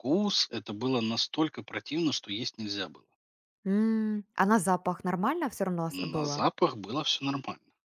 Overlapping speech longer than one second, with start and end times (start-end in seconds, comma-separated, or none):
none